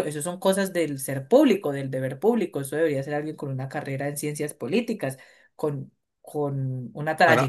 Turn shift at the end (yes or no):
no